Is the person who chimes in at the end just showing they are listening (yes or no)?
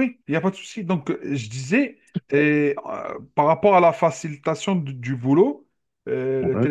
yes